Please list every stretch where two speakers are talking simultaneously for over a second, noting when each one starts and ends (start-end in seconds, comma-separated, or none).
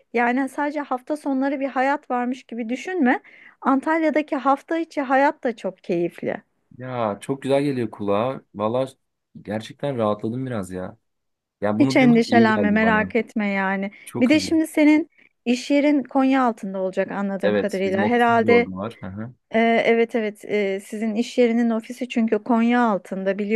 11.8-13.1, 17.4-18.7